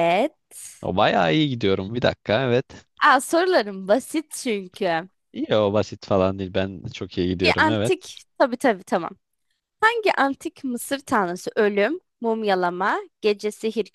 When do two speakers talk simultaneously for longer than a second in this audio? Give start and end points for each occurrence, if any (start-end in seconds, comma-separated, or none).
none